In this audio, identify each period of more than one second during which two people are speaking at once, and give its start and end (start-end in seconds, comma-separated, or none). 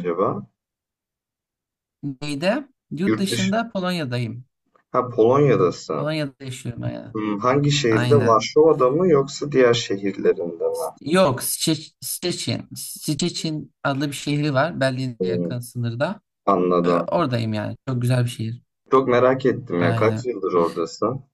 none